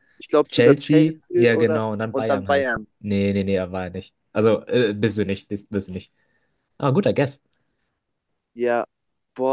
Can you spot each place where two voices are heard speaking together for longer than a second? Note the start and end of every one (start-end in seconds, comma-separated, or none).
0.5-2.9